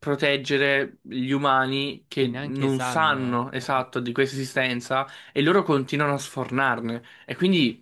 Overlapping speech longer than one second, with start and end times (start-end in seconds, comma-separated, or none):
2.1-3.9